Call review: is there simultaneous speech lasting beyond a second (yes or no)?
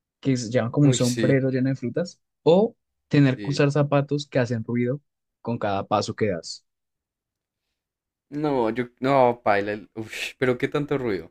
no